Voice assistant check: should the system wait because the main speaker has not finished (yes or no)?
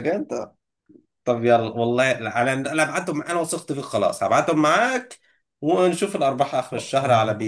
no